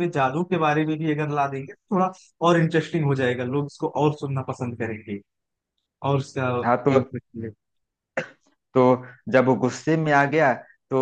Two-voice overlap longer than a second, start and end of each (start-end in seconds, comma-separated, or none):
none